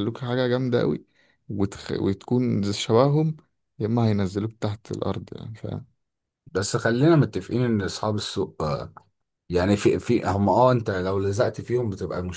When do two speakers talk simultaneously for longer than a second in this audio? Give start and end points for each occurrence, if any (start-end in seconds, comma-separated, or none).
none